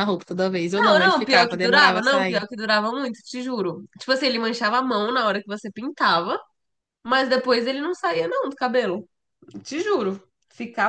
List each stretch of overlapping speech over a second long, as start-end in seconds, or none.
0.7-2.4